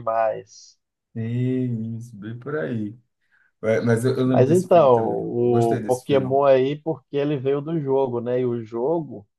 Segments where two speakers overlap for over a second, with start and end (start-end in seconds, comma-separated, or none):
4.2-6.2